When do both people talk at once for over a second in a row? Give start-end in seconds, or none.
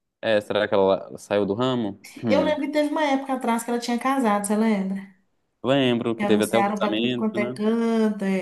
6.2-7.6